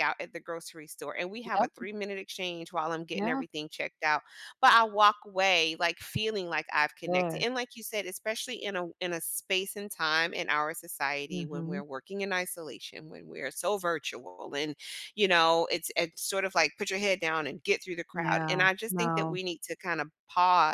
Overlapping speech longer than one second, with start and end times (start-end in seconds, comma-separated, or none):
18.1-19.4